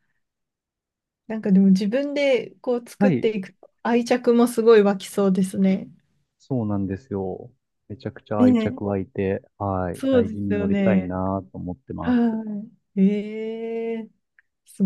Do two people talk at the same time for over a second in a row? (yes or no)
yes